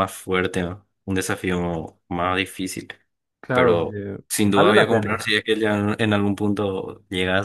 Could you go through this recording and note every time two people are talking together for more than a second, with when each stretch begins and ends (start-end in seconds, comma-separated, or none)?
3.5-5.3